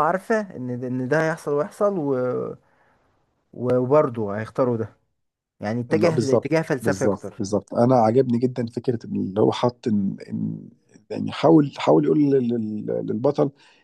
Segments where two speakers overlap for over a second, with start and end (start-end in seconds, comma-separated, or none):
5.9-7.4